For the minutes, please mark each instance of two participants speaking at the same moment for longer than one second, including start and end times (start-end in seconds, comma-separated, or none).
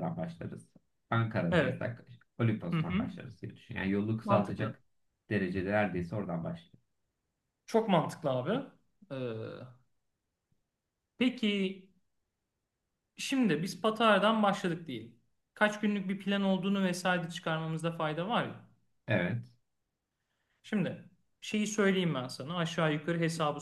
none